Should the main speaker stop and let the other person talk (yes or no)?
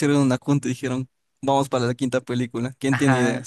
yes